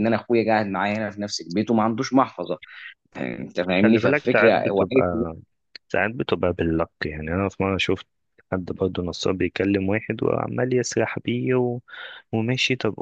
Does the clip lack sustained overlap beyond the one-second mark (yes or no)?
no